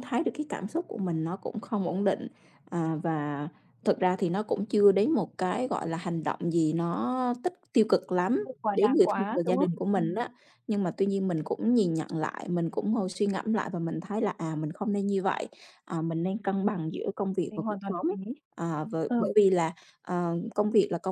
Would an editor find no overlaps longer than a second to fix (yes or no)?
no